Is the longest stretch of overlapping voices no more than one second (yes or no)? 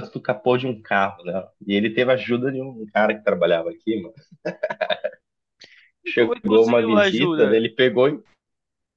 no